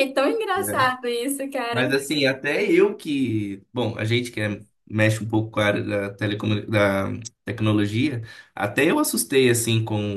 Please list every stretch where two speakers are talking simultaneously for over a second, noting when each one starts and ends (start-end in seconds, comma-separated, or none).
none